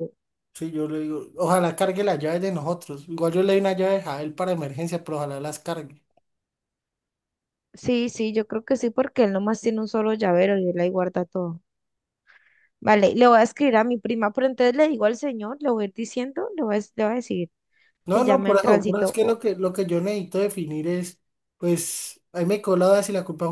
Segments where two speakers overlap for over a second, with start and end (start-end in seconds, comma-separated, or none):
18.1-19.4